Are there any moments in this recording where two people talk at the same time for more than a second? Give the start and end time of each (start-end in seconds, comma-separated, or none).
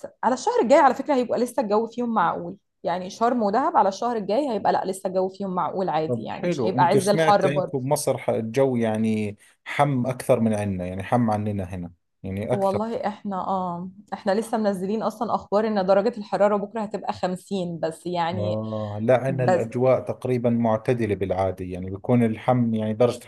6.1-7.8